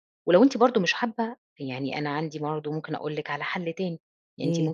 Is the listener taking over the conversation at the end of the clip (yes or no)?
no